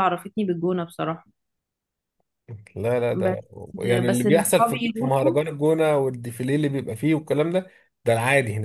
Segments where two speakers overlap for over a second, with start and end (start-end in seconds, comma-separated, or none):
4.0-5.4